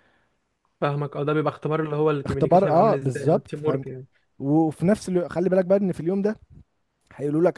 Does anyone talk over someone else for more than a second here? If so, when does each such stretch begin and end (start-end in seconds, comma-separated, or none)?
2.3-3.9